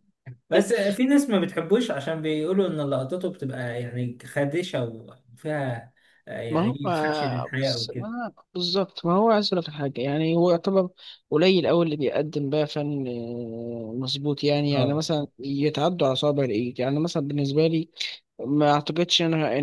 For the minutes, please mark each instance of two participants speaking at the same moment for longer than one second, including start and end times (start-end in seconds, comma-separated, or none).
6.5-8.1